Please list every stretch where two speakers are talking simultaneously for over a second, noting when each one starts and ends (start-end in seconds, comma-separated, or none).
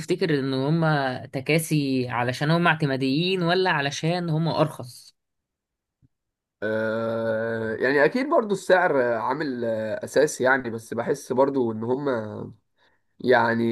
none